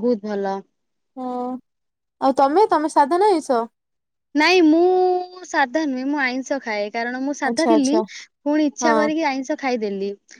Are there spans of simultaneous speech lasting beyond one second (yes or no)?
no